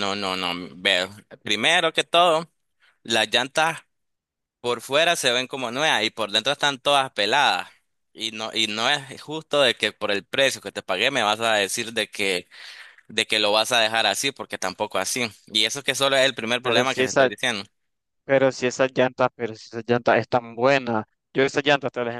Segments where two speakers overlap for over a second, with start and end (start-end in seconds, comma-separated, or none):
none